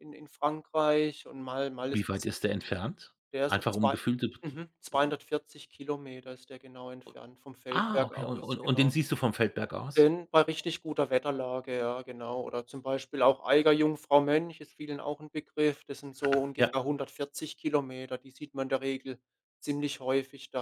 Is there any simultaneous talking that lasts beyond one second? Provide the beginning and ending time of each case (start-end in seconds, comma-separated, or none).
7.7-8.9